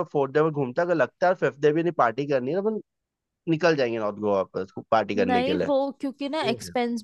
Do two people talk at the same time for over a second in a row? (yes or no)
no